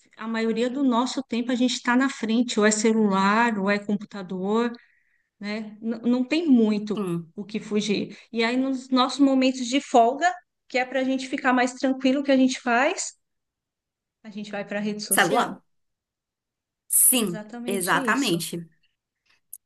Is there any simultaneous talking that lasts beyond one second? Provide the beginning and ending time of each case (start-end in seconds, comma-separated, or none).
17.1-18.4